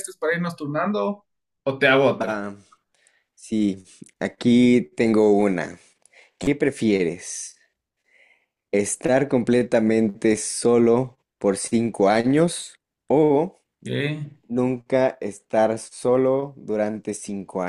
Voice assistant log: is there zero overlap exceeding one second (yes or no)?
yes